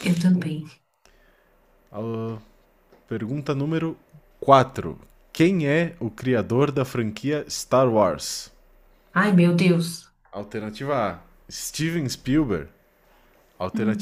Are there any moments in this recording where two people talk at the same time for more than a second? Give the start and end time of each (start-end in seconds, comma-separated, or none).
none